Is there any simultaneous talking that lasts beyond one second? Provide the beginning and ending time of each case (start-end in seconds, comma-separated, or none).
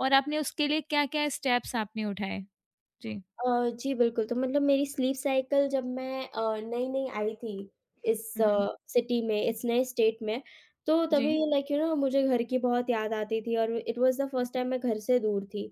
none